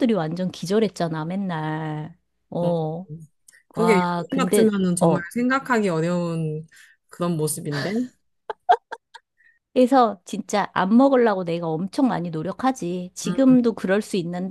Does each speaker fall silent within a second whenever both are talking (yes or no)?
no